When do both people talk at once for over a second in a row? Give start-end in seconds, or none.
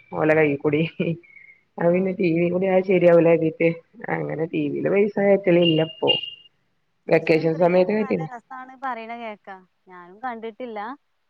none